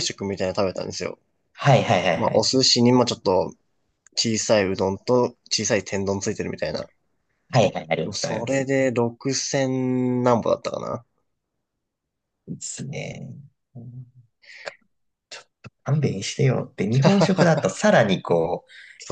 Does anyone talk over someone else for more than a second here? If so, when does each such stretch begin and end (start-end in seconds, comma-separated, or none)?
none